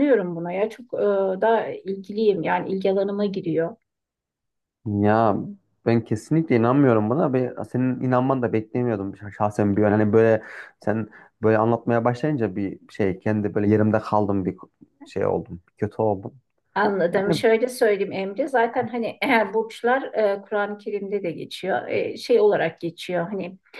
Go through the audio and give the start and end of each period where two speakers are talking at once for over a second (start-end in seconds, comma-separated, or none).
none